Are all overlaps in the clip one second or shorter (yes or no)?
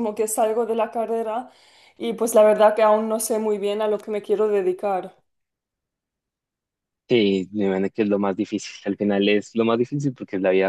yes